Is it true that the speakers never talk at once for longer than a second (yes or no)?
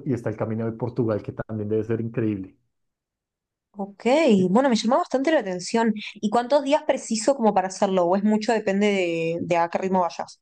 yes